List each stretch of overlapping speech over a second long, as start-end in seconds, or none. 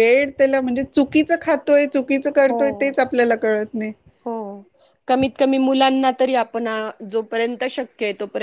none